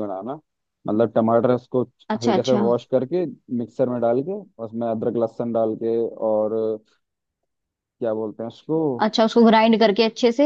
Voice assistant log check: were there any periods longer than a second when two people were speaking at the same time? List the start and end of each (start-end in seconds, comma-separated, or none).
none